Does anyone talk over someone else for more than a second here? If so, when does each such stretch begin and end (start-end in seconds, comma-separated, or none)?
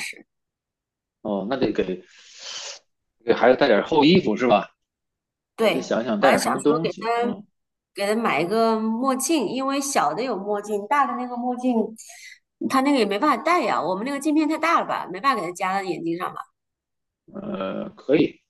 5.6-7.4